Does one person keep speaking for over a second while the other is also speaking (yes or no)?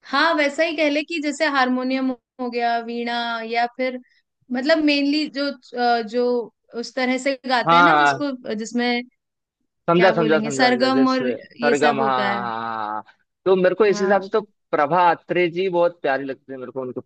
yes